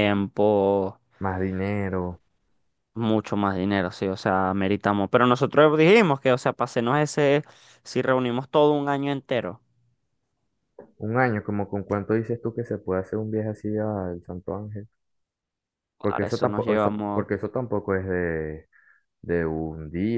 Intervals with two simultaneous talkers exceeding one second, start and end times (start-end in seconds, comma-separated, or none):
16.0-17.2